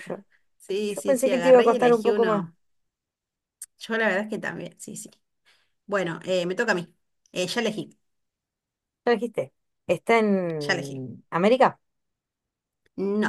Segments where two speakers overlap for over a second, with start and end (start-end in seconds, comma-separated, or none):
0.8-2.4